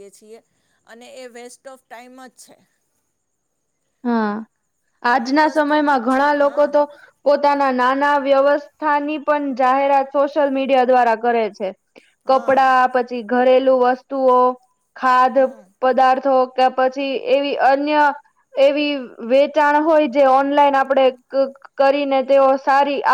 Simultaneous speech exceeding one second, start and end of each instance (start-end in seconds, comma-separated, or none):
5.1-6.8